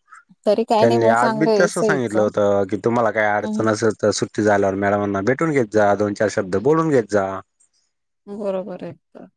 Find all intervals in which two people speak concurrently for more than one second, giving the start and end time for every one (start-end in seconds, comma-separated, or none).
0.8-2.3